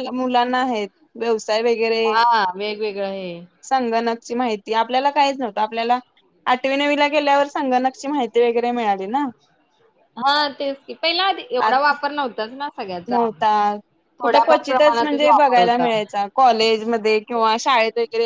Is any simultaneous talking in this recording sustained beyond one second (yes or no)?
yes